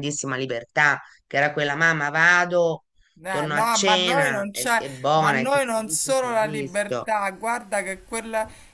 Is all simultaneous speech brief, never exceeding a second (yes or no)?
no